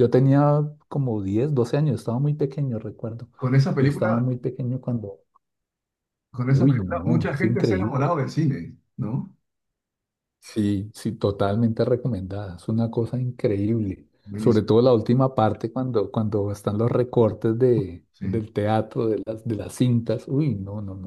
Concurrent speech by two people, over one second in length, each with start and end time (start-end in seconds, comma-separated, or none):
6.5-8.0